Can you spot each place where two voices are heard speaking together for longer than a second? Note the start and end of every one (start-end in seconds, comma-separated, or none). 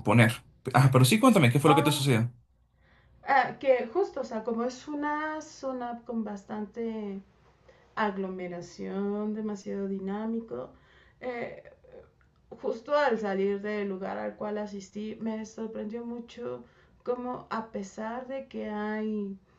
none